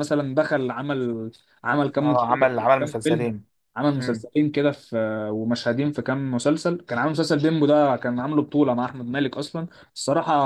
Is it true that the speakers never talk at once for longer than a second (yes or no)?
no